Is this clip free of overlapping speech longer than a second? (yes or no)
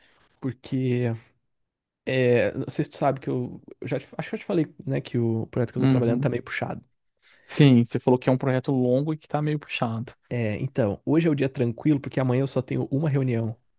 yes